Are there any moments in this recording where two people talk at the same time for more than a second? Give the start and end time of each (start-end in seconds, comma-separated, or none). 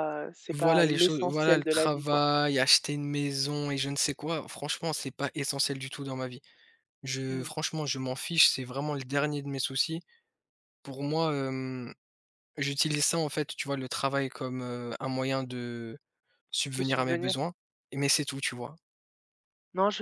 0.5-2.2